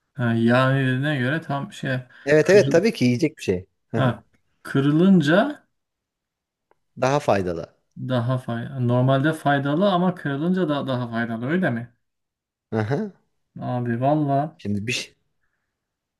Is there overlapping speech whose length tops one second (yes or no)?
no